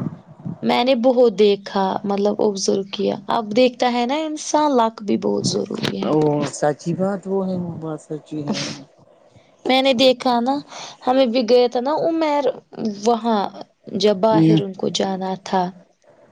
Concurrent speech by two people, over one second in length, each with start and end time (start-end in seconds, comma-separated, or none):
none